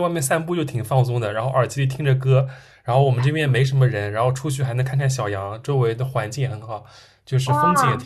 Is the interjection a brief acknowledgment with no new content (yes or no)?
yes